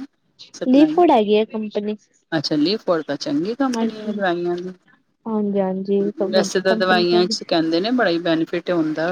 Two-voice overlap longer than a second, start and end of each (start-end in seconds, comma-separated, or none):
none